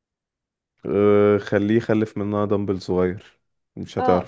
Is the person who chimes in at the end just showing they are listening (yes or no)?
no